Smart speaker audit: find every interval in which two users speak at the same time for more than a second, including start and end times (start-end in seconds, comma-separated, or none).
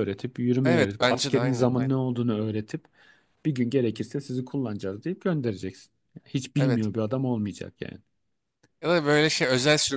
0.6-1.9